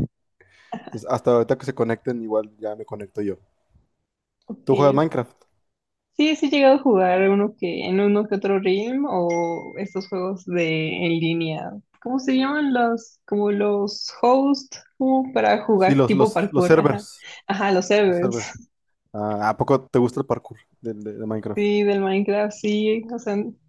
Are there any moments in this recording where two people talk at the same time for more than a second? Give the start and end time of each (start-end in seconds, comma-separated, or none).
15.8-17.0